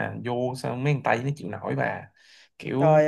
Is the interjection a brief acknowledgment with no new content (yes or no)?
no